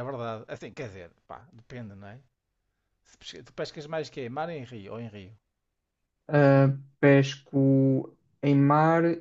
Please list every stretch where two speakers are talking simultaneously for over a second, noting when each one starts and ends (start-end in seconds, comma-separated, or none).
none